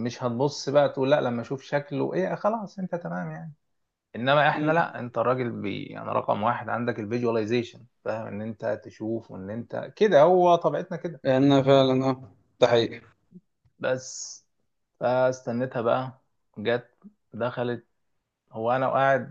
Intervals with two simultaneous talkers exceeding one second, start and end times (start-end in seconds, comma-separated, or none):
none